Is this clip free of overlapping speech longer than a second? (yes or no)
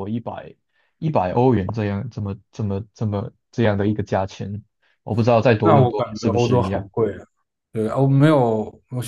no